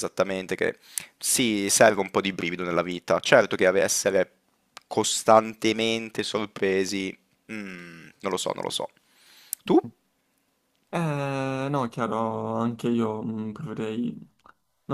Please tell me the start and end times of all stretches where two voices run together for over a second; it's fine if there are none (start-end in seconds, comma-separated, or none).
none